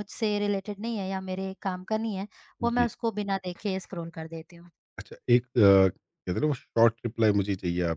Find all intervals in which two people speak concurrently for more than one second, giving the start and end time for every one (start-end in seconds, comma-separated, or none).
none